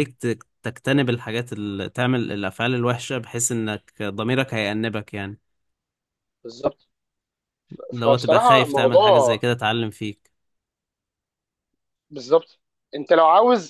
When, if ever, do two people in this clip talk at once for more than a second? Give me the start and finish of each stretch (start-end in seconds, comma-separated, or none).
7.9-9.4